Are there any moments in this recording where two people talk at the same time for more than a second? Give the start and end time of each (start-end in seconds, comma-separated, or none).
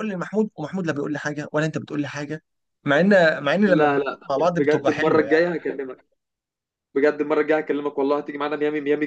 3.6-5.5